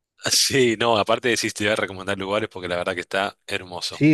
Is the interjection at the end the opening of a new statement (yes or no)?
yes